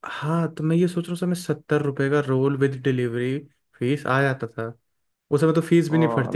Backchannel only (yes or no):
no